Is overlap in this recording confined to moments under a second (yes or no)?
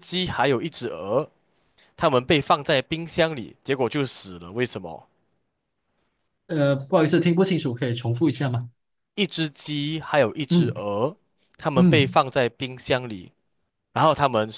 yes